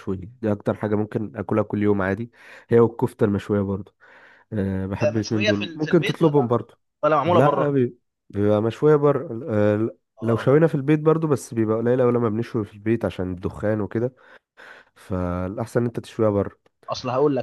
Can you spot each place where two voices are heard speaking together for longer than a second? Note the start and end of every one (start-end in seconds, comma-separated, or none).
4.8-6.6